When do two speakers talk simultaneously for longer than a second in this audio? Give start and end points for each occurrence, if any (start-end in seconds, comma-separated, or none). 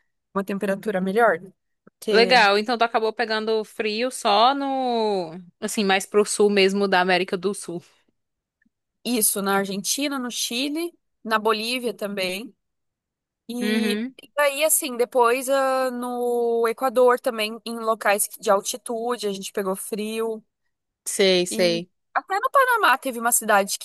none